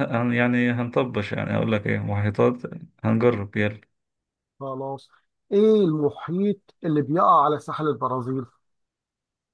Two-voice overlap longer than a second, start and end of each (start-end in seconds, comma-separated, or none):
none